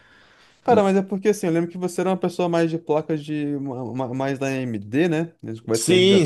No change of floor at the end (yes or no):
no